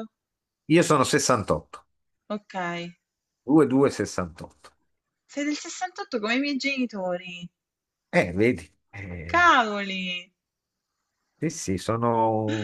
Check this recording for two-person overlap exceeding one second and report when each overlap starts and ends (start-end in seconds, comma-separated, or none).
none